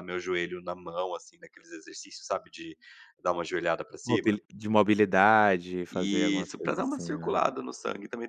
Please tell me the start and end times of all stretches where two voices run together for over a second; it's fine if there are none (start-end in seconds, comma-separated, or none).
5.9-7.4